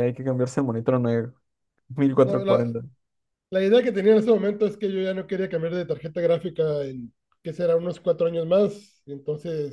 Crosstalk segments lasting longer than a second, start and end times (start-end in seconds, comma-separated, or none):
none